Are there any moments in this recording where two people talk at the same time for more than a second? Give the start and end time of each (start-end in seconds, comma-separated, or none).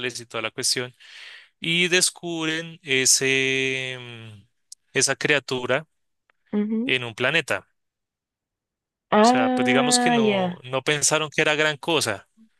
9.2-10.6